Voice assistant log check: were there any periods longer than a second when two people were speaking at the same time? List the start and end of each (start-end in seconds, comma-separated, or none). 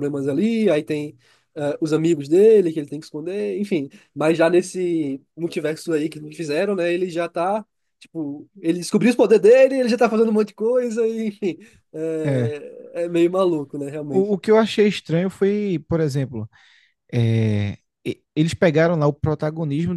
none